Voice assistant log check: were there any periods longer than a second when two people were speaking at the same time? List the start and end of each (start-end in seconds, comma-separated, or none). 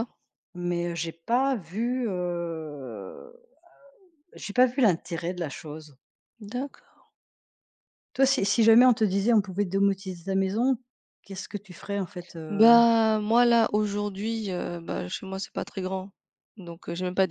none